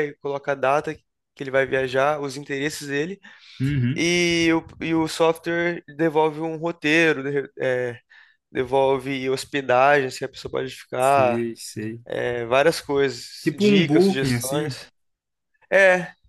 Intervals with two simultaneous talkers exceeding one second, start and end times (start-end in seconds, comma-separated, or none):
13.4-14.8